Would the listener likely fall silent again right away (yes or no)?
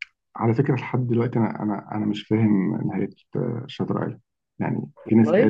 yes